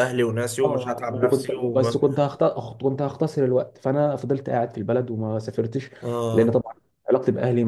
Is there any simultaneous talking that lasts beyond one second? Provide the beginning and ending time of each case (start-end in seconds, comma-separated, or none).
0.6-2.0